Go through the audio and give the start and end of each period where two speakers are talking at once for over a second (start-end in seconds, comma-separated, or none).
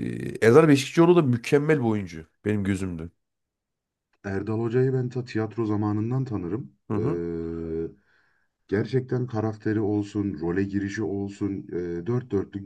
none